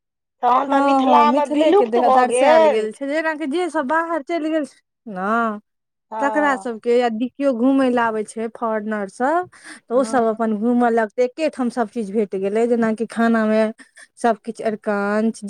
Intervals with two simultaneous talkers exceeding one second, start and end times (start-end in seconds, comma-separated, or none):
0.7-2.9